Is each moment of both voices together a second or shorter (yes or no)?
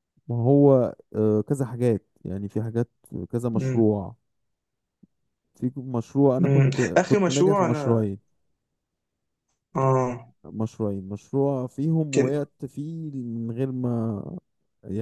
no